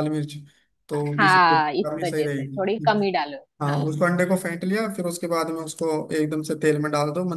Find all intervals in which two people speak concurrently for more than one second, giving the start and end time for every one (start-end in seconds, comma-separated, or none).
0.9-3.0